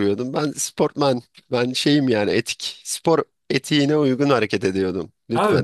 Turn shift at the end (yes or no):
yes